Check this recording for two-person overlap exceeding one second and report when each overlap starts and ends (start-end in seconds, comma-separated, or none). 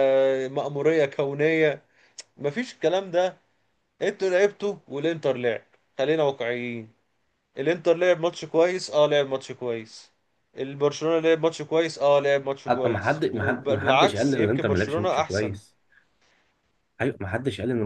12.7-15.6